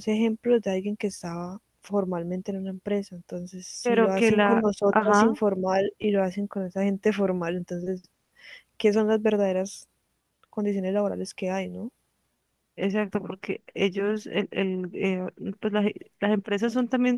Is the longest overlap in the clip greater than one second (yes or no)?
yes